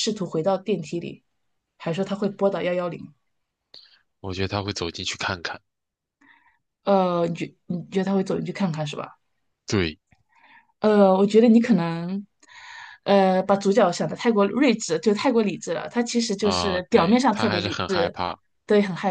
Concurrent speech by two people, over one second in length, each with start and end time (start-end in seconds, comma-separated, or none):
16.4-18.2